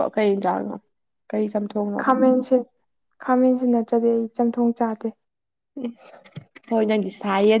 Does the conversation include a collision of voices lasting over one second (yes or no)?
no